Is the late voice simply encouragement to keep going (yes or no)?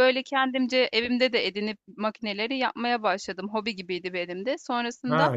yes